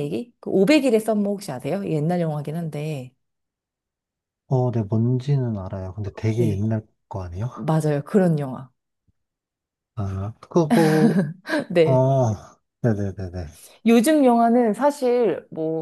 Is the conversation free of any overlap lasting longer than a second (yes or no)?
yes